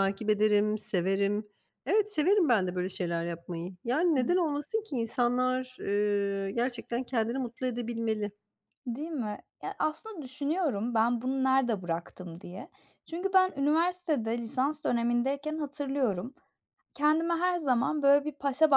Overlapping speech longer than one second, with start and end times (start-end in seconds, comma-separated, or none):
none